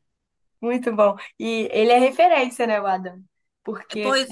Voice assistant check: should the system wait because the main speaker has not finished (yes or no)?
yes